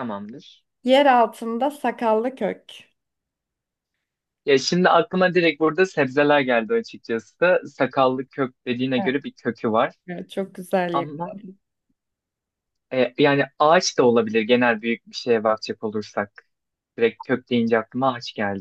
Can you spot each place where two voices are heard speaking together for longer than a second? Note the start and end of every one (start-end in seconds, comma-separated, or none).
none